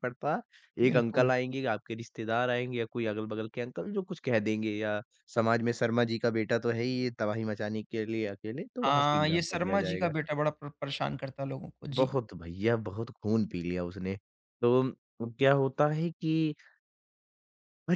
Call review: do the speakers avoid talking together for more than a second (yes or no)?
no